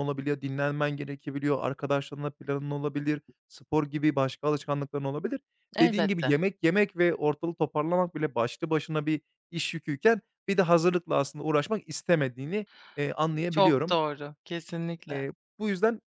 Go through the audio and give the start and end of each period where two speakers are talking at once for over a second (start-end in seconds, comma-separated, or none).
none